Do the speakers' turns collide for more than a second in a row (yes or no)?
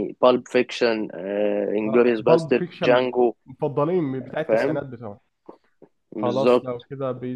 yes